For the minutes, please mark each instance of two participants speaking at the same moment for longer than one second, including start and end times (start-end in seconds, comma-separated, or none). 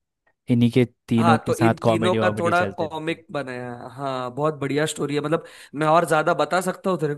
1.2-3.2